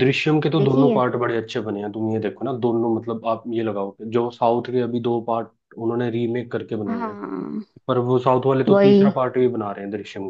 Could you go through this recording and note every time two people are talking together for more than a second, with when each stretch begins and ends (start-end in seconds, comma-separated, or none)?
none